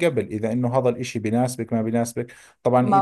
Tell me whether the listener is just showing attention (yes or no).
yes